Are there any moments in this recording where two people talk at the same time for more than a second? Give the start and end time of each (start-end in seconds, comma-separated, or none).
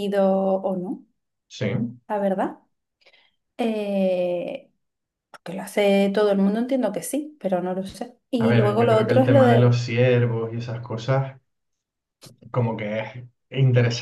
8.4-9.8